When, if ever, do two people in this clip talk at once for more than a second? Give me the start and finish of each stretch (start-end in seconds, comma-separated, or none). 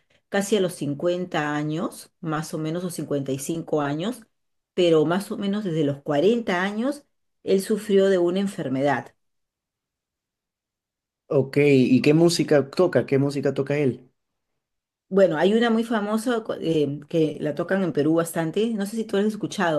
none